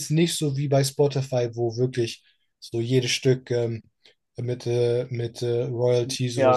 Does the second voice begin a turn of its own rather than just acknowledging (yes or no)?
yes